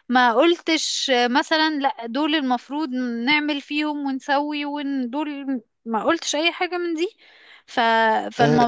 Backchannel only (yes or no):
no